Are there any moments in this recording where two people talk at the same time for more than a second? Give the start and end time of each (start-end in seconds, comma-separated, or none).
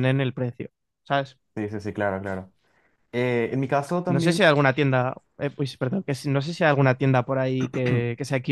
none